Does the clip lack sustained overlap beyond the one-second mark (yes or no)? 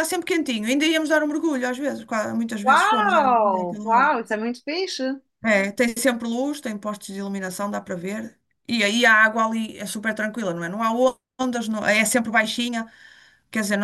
no